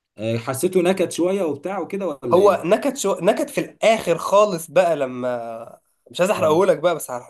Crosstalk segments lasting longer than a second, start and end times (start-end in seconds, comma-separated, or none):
none